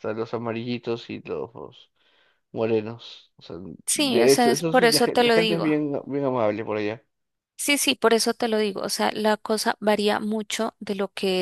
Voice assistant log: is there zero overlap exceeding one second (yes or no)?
no